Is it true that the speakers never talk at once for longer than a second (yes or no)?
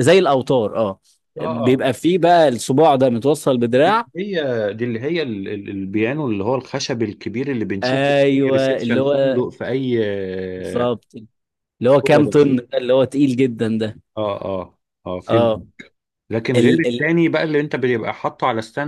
no